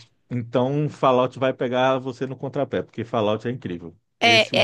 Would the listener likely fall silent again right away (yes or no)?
no